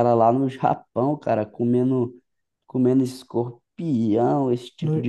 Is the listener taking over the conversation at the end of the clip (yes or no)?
no